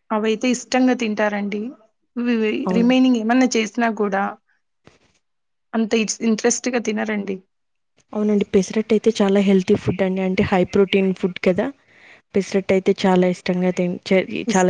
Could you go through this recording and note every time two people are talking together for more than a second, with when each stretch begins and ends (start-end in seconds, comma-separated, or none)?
none